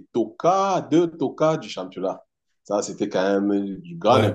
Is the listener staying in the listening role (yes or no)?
no